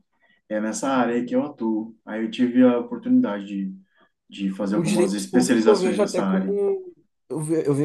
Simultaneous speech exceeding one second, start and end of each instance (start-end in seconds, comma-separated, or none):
4.6-6.6